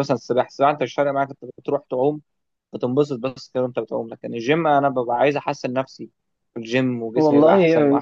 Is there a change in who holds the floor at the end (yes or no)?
yes